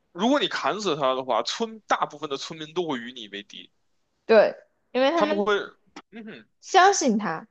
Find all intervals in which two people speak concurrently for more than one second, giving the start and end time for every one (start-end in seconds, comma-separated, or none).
none